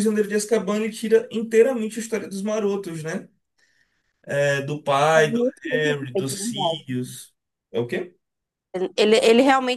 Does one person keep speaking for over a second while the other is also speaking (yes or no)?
yes